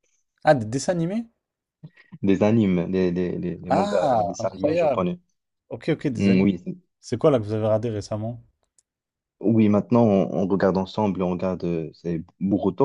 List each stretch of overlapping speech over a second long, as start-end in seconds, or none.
3.7-5.0